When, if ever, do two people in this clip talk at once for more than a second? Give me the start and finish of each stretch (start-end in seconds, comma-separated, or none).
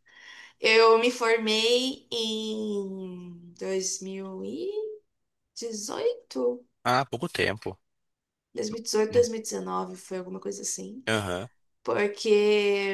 none